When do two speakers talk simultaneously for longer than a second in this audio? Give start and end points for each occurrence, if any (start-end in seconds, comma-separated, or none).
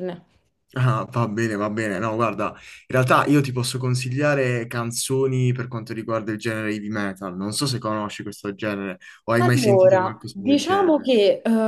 9.4-11.1